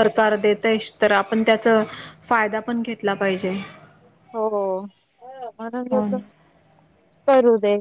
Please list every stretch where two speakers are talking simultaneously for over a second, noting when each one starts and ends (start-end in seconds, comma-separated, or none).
none